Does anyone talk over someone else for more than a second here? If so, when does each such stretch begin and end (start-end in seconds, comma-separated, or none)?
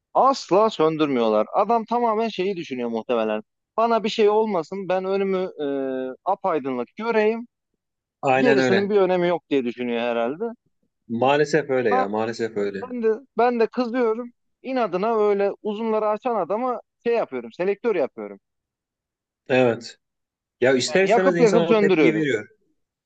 20.9-22.3